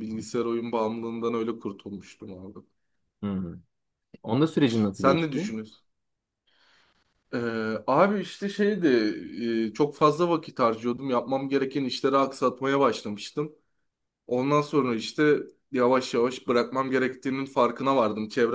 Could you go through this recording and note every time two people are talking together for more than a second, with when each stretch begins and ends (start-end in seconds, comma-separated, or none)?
none